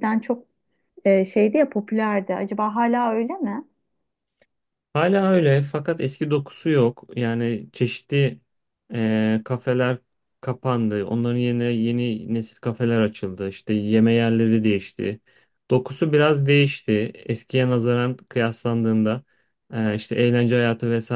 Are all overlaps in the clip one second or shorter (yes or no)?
yes